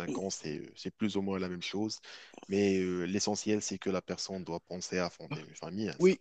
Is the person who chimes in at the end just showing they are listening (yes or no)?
no